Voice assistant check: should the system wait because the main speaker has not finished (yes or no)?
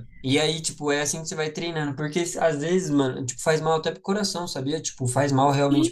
no